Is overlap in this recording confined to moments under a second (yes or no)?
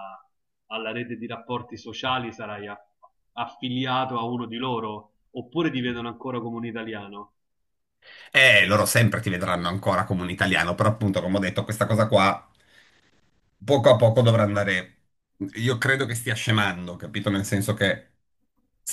yes